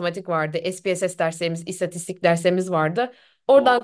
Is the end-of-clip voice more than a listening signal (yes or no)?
no